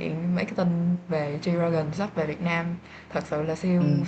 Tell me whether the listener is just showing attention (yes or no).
yes